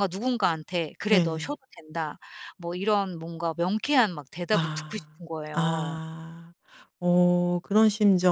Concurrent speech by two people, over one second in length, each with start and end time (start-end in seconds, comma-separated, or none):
4.5-6.0